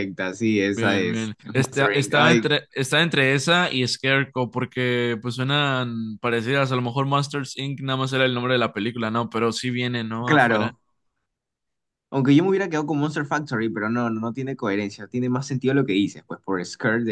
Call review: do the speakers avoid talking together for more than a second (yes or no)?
no